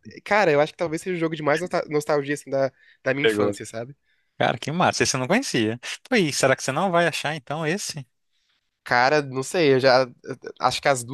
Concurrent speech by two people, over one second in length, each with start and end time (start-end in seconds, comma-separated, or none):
none